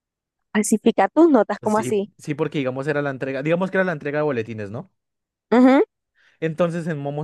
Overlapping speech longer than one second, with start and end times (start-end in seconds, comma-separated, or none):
none